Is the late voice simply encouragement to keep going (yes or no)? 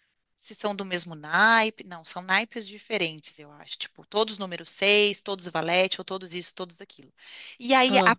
yes